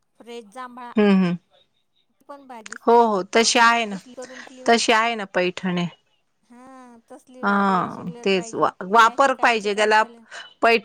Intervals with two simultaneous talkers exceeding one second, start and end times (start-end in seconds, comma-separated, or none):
8.2-10.0